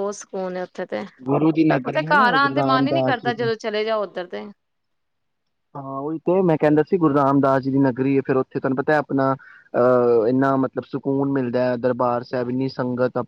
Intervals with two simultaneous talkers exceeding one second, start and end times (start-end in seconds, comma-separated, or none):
1.9-3.4